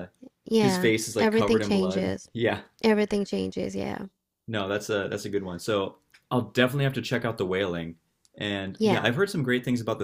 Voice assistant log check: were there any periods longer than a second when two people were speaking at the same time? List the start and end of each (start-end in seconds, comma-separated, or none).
0.5-2.3